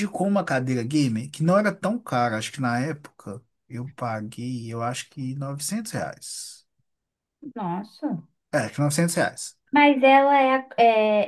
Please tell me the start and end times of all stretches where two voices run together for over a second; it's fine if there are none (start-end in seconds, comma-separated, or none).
none